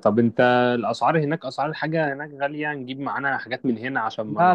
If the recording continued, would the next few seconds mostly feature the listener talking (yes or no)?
yes